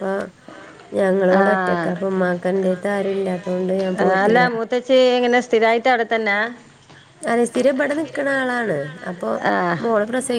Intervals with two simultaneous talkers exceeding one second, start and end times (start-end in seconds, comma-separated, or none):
none